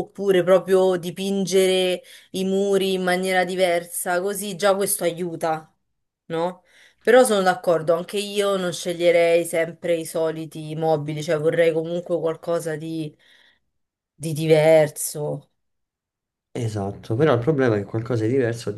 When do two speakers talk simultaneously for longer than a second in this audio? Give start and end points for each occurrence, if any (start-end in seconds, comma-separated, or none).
none